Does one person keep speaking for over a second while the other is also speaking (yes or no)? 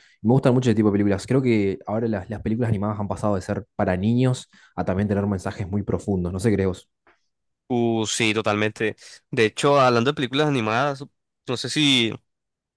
no